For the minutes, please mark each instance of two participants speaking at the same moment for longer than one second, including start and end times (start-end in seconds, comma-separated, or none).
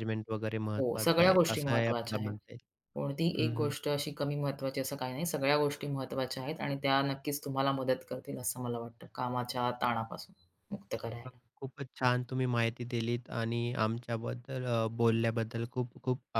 0.8-2.3